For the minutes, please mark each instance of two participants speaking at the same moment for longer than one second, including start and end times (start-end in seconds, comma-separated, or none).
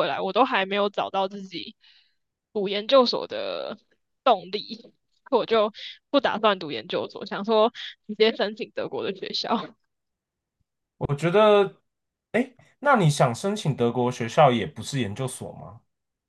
none